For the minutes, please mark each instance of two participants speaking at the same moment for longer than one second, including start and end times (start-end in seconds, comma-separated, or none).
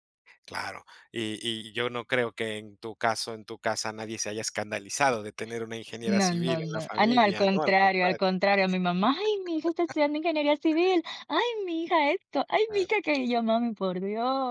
6.2-8.2